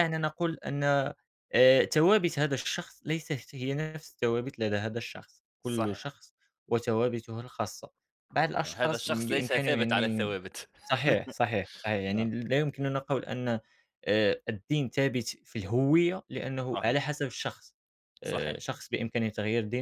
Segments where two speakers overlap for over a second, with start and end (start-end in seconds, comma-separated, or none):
8.7-10.3